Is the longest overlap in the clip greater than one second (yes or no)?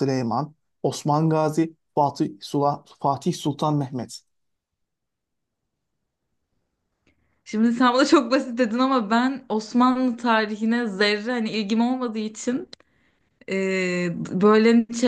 no